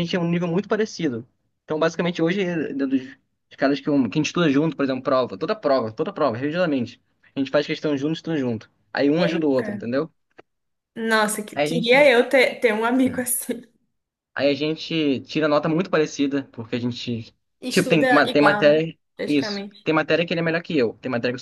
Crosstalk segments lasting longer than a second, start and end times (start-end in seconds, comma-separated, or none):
17.6-19.9